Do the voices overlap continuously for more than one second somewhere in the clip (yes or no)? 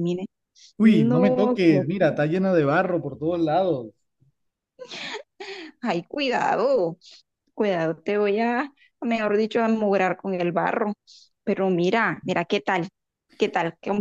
yes